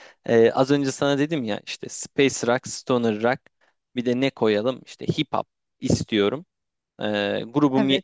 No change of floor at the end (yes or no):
yes